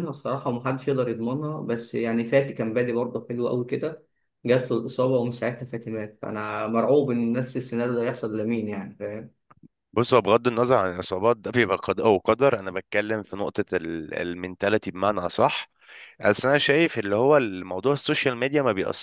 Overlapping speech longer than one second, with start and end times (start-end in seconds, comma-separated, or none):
none